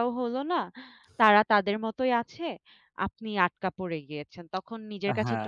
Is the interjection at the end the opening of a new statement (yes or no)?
yes